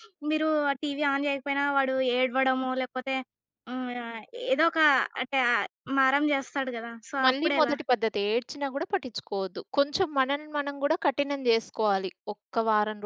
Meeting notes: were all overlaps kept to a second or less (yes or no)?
yes